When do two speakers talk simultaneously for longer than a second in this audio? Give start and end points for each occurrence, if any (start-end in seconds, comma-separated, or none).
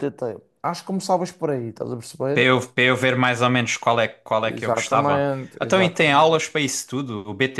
4.4-6.5